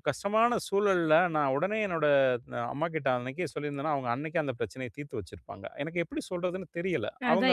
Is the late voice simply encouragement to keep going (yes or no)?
no